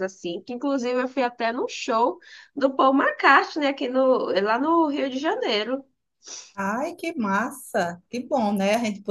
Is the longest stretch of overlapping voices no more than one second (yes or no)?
yes